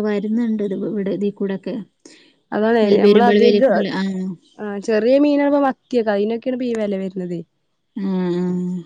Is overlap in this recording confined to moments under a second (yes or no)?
yes